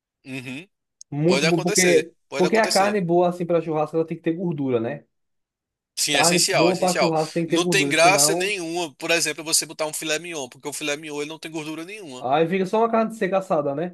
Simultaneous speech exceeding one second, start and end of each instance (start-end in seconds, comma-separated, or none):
1.2-3.0, 6.1-8.5